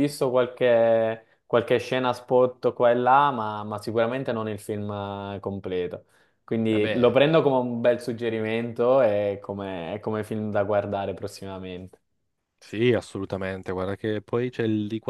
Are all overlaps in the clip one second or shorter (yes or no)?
yes